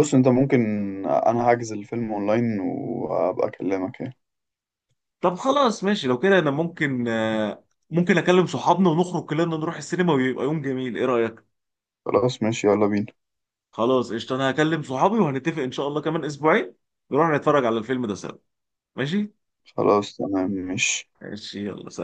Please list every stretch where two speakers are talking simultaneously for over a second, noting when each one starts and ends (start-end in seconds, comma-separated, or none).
none